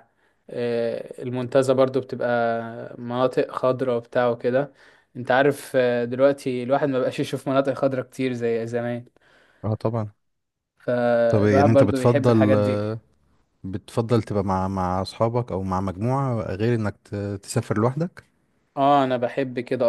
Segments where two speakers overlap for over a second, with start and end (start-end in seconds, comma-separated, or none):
11.3-12.6